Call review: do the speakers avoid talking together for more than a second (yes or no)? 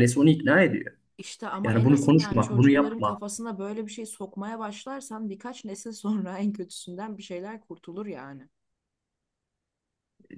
no